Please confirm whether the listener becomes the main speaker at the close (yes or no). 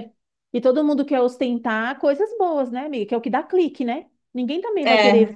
no